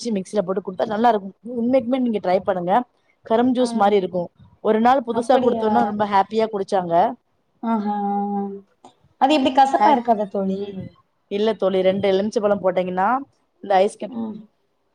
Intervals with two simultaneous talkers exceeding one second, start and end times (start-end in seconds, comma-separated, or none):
none